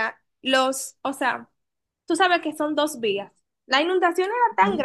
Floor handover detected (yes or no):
no